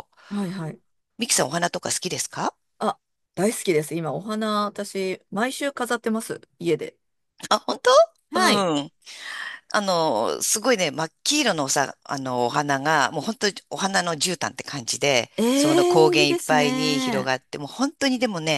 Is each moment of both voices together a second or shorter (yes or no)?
no